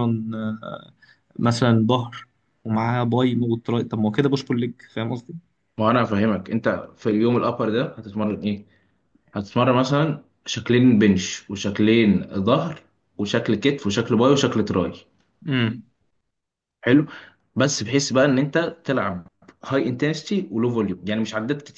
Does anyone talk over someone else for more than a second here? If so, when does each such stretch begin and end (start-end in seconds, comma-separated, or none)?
none